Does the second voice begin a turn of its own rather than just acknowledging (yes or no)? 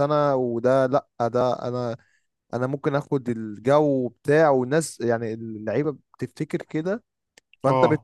no